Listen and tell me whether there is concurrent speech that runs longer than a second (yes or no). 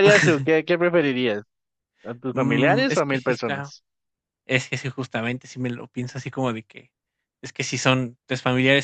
yes